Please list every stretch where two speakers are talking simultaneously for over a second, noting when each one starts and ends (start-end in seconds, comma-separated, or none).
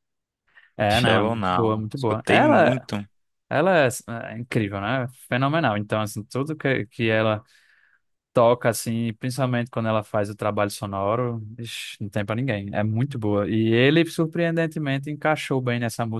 0.9-2.7